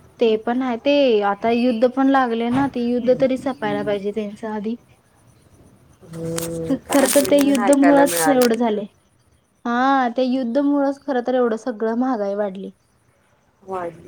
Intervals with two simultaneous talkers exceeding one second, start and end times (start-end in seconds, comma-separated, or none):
6.9-8.6